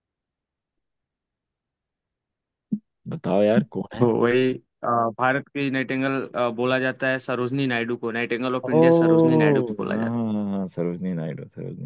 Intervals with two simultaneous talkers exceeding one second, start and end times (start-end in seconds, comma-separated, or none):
8.6-10.1